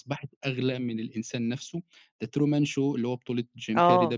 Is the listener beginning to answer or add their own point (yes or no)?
yes